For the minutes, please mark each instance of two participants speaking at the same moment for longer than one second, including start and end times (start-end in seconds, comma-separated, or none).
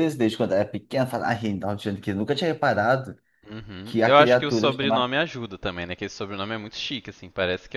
3.8-5.1